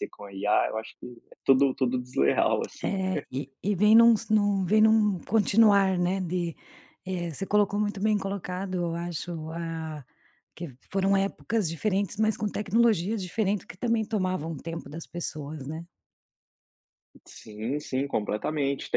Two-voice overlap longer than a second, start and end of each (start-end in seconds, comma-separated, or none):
none